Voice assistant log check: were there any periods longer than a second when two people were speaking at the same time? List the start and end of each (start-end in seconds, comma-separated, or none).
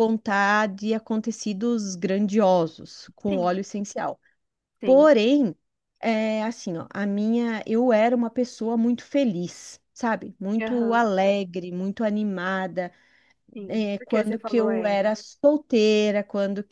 13.7-15.1